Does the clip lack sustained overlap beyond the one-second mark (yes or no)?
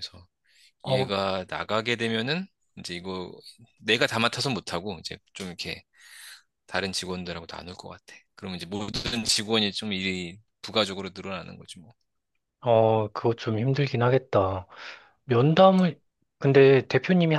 yes